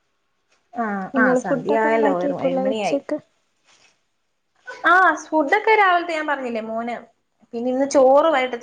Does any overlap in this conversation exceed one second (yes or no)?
yes